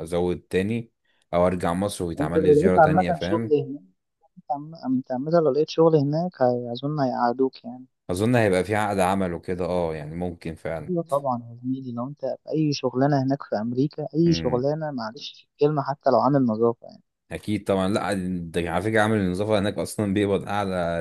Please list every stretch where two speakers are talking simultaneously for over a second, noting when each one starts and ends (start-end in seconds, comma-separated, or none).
2.2-3.6